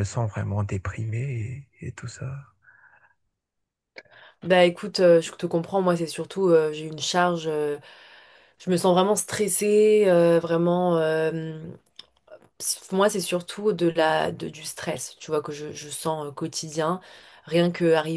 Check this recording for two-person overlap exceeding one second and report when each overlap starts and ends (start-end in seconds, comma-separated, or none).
none